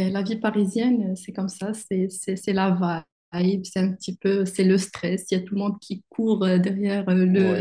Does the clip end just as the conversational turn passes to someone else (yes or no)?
yes